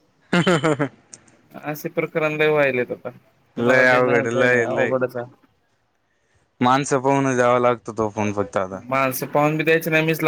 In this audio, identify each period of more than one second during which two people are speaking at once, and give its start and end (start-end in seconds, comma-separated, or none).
3.6-4.9